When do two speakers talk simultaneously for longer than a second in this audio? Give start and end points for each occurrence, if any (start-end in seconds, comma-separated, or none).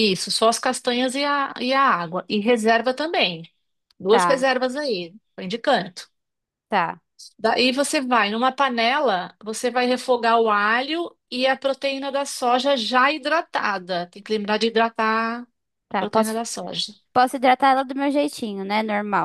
none